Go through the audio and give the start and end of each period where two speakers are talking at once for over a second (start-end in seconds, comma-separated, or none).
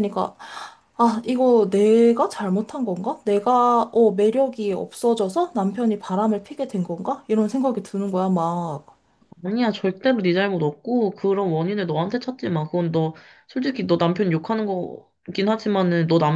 none